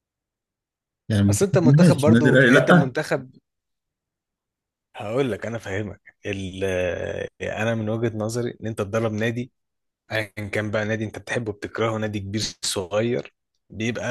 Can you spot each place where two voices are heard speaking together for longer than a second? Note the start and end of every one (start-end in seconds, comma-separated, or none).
1.3-3.0